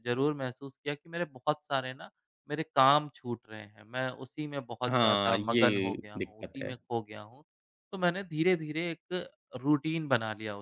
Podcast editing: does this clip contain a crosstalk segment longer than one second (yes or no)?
yes